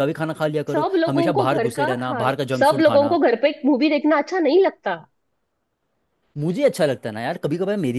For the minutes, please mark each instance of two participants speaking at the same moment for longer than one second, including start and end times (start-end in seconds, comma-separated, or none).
0.7-3.2